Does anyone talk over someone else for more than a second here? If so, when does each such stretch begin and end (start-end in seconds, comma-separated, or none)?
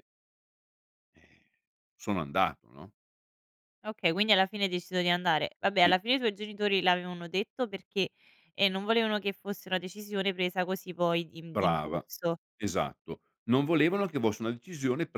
none